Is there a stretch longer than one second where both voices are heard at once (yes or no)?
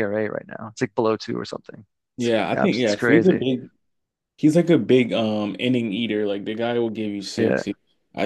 yes